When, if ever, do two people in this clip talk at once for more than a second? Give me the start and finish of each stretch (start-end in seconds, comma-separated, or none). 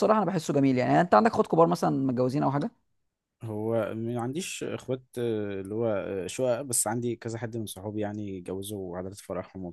none